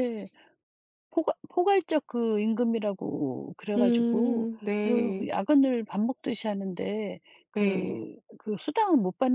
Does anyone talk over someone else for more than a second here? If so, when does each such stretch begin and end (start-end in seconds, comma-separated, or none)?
3.8-5.3